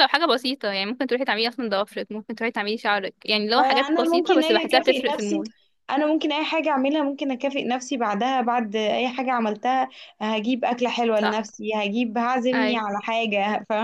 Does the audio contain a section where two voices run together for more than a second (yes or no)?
yes